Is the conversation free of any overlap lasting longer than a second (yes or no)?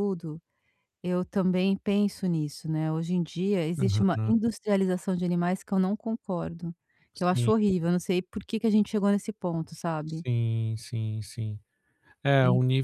yes